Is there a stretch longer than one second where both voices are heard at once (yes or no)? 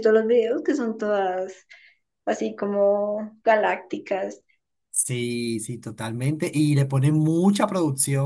no